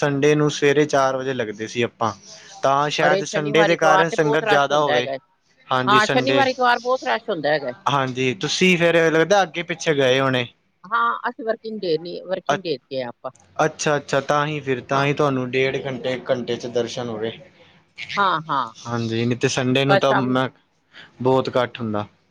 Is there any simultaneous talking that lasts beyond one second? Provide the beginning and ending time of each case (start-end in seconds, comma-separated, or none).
3.1-5.1